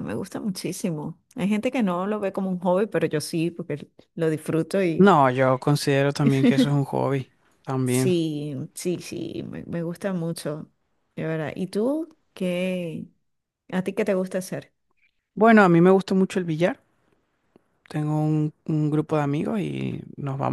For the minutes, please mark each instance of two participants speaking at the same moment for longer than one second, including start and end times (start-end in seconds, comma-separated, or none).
none